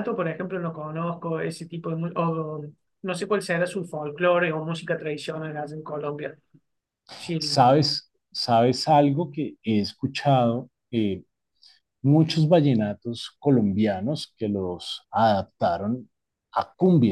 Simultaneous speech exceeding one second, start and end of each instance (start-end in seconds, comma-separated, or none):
none